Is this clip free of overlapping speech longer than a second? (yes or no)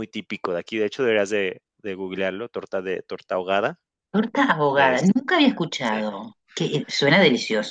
yes